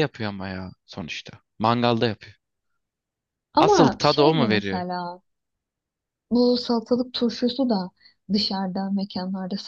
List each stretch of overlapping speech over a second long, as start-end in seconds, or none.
3.6-4.9